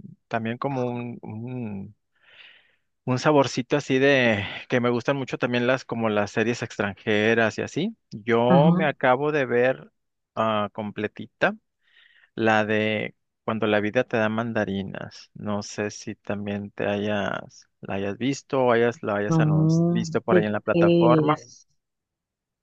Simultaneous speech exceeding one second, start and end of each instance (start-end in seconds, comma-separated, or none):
19.3-21.4